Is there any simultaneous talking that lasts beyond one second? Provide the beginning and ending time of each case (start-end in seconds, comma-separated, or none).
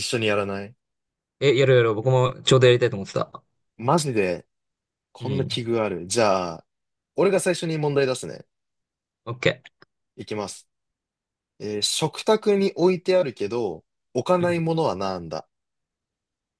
none